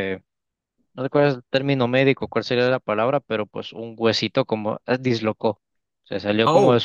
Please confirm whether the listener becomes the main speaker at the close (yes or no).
no